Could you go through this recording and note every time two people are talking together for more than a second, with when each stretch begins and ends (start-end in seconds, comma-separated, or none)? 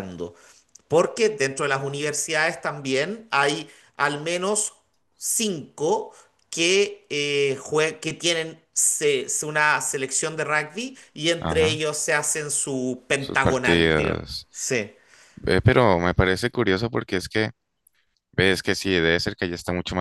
13.2-14.5